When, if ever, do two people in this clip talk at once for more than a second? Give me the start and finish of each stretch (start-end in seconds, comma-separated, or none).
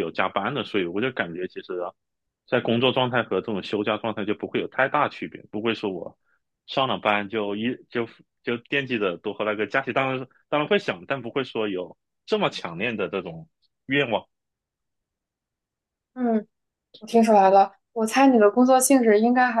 none